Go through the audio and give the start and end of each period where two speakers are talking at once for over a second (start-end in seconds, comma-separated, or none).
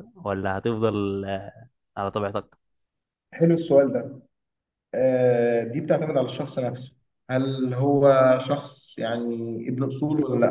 none